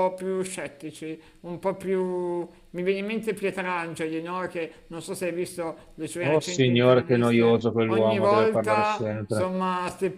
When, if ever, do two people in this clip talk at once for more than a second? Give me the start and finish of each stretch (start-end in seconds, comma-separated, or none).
6.2-9.5